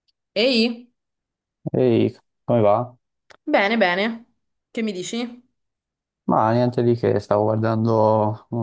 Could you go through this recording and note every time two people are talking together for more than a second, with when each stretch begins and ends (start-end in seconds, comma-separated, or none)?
none